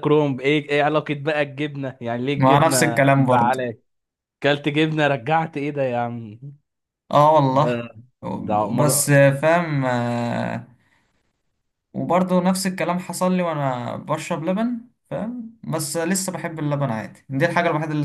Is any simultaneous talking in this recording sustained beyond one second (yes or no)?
yes